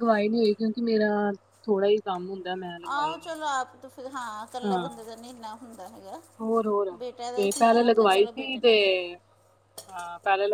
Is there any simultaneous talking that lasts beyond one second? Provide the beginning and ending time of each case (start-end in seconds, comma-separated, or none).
7.4-8.7